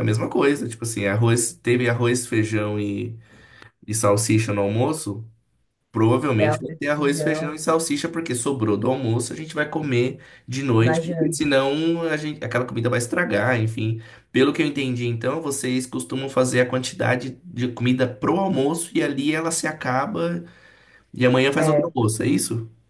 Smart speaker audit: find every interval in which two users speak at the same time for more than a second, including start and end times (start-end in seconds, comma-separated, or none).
6.4-7.6